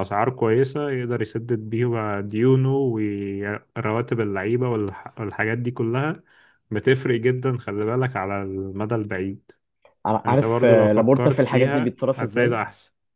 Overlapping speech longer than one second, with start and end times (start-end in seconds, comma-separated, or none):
10.3-12.6